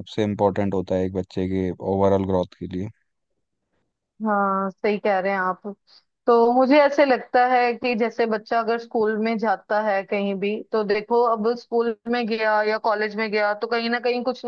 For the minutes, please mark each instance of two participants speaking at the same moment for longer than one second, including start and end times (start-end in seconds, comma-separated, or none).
none